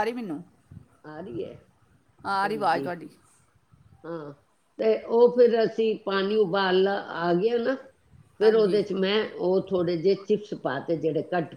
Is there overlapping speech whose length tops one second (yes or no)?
no